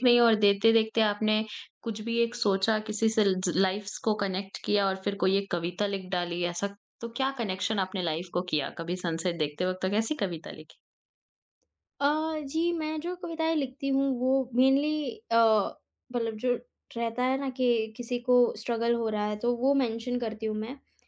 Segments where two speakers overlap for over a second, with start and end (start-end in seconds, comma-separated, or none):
none